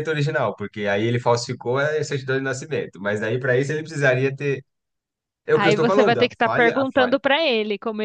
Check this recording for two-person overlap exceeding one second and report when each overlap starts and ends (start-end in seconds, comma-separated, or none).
5.5-7.2